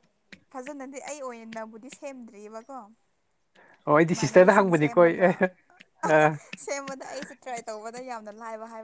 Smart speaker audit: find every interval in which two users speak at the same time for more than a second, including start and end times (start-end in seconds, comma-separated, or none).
4.1-5.3